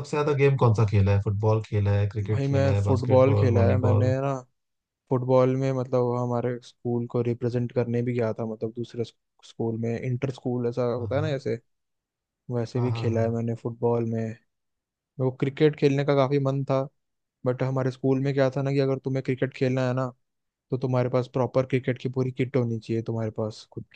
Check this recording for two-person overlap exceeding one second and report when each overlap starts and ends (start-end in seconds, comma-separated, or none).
2.3-4.1